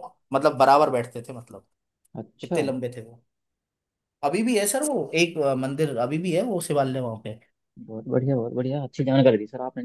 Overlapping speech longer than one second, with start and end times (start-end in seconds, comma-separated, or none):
none